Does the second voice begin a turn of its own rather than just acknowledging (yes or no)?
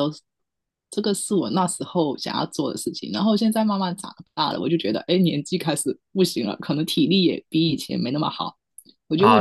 yes